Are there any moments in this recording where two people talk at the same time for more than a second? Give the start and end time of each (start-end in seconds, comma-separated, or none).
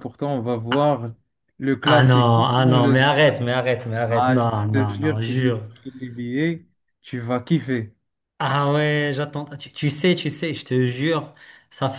1.9-3.4, 4.1-5.6